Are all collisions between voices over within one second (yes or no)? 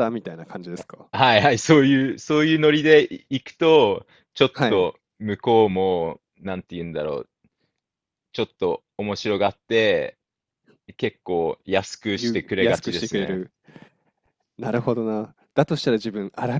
no